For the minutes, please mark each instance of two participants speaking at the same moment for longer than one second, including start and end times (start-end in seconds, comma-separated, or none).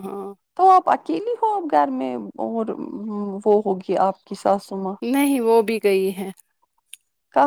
none